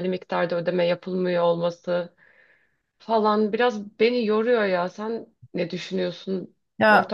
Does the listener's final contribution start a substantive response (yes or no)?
yes